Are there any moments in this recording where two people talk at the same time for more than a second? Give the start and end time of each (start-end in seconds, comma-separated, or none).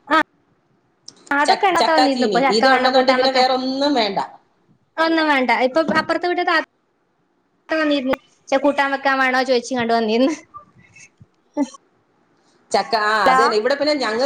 1.5-3.5